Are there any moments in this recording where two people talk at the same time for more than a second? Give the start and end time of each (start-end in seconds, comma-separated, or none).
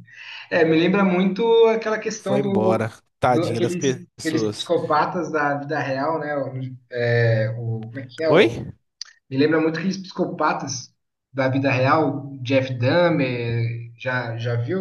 2.2-4.7